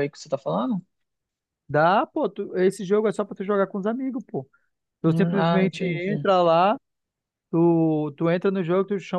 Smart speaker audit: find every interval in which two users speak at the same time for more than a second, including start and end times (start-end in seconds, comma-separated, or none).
5.0-6.2